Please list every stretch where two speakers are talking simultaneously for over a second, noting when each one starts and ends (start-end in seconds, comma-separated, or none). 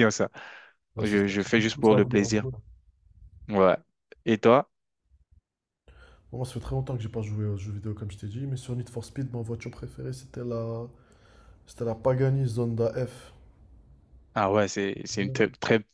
1.0-2.4